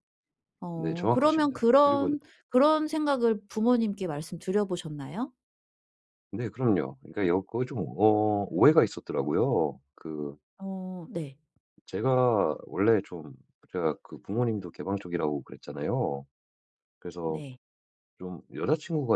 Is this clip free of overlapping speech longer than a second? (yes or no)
no